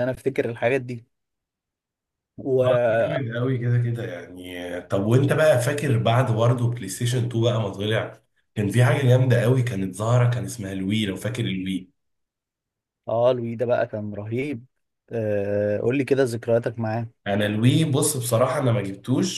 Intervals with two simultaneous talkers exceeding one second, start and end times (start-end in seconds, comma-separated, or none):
none